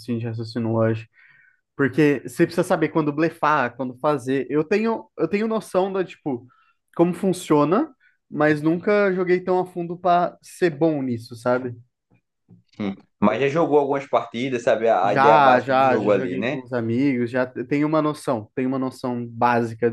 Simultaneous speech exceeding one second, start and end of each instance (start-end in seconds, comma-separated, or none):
15.0-16.6